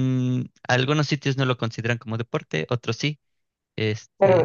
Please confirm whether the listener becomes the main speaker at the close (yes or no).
yes